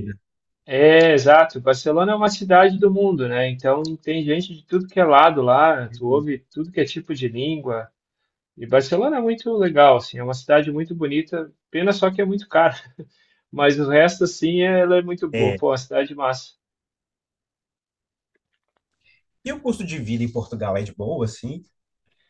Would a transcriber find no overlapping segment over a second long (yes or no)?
yes